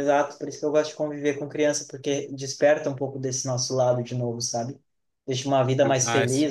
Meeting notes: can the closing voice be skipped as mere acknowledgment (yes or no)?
yes